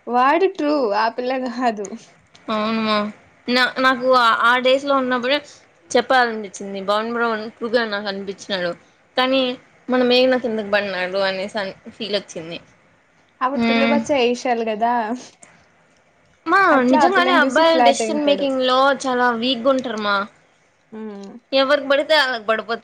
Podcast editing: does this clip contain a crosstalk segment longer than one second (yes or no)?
yes